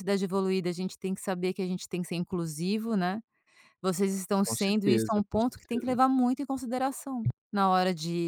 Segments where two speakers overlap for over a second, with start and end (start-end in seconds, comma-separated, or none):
4.4-6.0